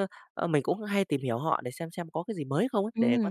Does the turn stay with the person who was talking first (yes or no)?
no